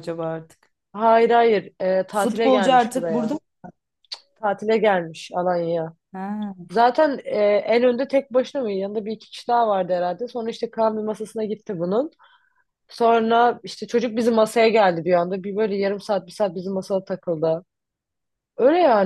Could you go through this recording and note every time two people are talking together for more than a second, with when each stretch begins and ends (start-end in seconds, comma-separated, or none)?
2.1-3.4